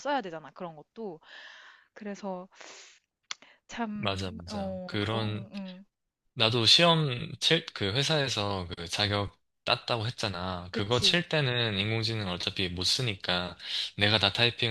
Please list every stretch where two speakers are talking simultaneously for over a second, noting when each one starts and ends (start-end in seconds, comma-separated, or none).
4.0-5.5